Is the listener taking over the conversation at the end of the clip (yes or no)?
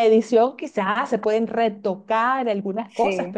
no